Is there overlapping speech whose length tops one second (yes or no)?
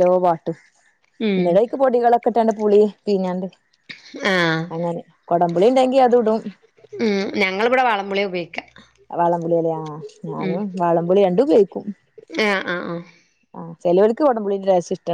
no